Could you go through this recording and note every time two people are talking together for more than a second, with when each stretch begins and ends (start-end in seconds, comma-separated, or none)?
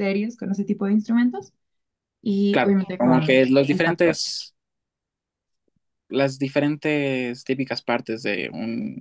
2.5-4.2